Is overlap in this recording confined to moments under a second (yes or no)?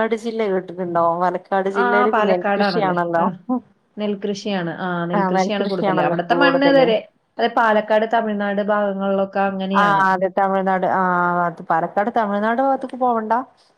no